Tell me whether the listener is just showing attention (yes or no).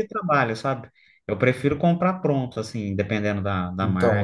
no